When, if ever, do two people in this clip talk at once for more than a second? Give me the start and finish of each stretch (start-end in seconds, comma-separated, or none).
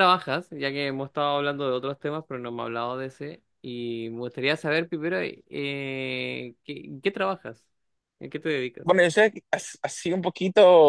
none